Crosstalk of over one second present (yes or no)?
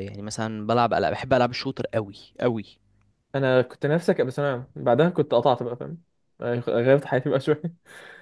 no